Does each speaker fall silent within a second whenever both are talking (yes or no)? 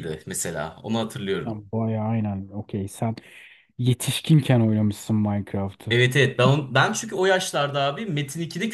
yes